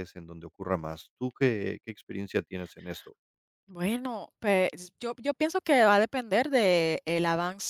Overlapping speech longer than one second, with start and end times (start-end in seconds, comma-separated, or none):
none